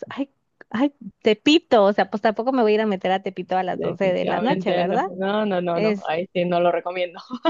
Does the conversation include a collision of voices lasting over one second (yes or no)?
yes